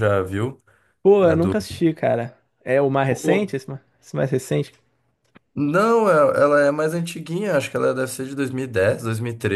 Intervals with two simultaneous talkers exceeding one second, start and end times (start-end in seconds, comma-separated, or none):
none